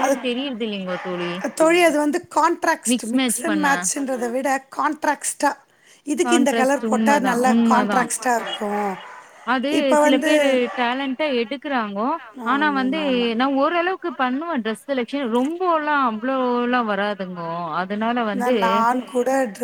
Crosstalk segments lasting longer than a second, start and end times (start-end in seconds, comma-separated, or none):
6.3-8.1